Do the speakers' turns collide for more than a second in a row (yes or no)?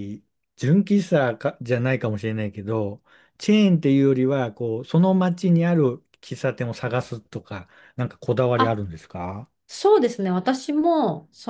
no